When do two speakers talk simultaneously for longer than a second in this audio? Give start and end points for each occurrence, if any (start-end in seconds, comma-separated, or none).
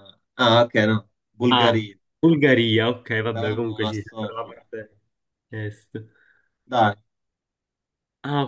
3.3-4.6